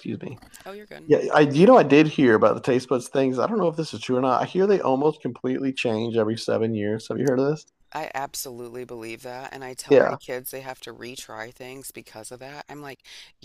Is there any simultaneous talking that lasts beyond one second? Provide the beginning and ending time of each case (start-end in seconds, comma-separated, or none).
none